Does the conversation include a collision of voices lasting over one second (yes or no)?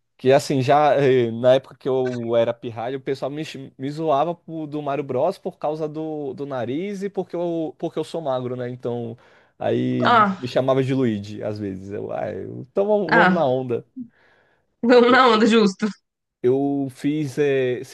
no